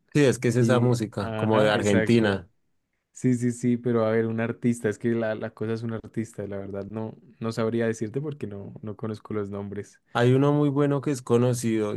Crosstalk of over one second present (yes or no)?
yes